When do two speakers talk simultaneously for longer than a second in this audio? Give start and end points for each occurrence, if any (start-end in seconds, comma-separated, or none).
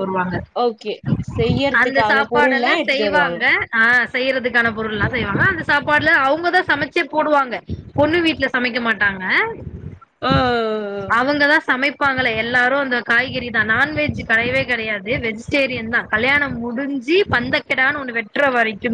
1.8-3.4